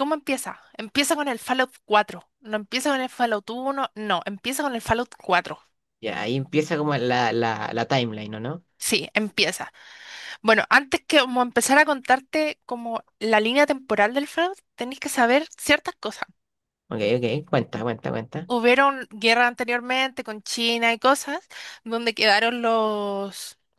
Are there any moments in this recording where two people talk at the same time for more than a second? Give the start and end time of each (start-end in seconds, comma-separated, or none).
none